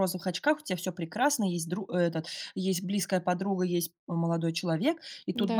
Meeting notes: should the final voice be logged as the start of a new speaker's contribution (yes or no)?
no